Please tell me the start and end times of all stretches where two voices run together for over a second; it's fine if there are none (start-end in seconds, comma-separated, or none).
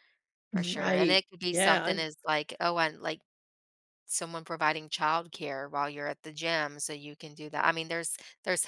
0.5-2.1